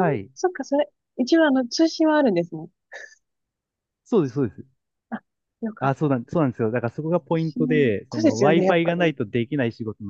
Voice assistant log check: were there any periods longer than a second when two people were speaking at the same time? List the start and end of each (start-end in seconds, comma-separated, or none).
7.3-9.1